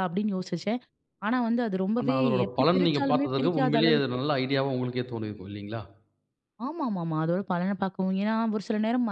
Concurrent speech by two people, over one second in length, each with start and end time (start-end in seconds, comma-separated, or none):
2.0-4.2